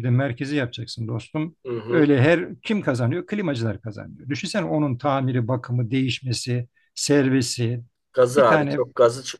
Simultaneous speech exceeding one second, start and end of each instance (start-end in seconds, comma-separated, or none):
none